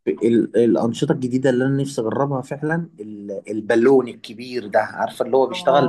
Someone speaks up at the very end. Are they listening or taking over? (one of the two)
listening